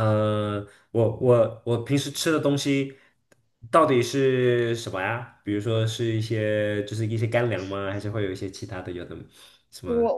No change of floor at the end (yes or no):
no